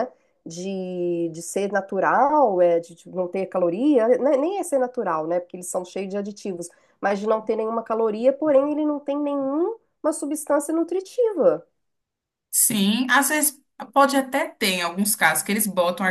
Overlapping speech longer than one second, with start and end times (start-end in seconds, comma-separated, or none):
none